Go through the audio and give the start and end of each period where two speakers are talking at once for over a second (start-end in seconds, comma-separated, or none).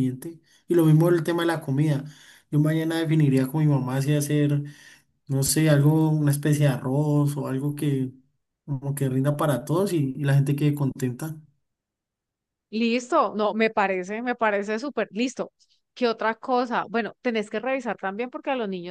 none